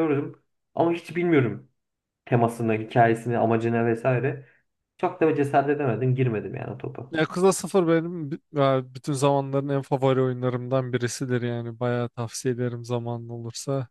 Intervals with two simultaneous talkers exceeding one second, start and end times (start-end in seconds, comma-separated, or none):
none